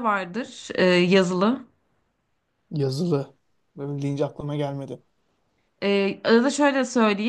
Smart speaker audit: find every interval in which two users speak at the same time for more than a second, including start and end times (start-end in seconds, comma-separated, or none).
none